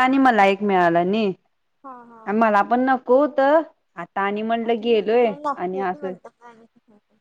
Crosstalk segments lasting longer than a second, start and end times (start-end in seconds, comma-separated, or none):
4.7-6.1